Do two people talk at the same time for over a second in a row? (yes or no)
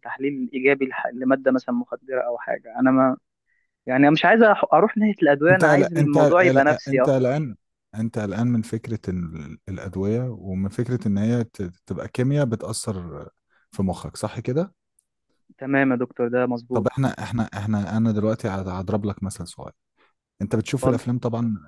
yes